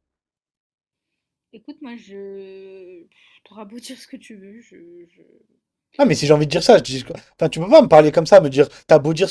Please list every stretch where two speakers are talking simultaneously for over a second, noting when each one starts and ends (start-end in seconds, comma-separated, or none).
none